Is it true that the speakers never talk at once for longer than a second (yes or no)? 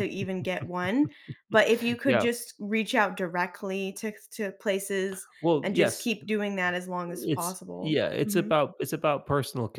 no